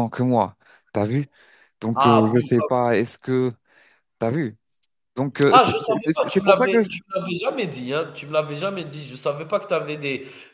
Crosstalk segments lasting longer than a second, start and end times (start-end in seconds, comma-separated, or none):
5.5-6.9